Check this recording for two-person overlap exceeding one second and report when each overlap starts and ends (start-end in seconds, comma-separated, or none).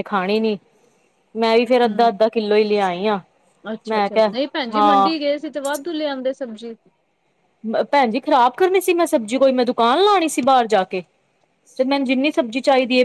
none